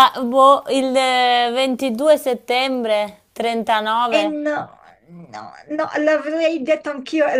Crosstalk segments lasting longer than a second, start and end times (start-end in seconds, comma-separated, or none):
none